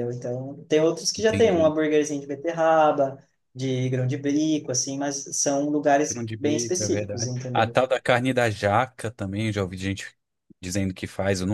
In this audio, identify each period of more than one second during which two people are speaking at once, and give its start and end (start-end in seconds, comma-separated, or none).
6.1-7.8